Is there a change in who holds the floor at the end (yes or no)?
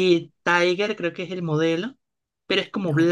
no